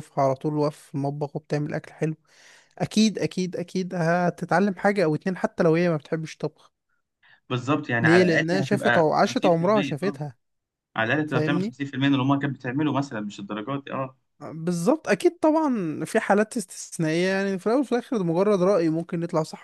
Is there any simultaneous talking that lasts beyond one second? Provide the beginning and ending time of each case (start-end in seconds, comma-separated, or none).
8.0-10.2